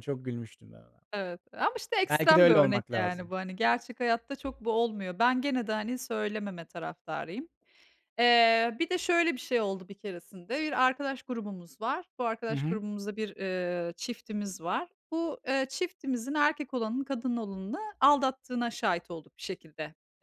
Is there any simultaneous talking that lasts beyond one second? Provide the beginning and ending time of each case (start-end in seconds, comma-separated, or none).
2.1-3.3